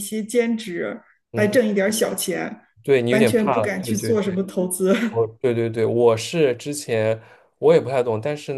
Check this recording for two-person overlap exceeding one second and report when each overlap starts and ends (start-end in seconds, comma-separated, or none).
3.1-4.3